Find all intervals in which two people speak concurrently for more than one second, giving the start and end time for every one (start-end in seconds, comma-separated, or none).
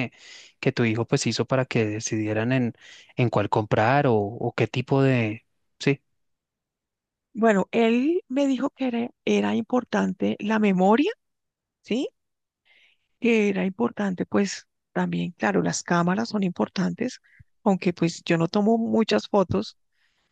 none